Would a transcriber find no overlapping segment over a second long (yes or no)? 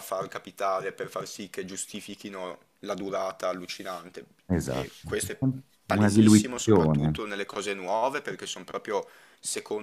no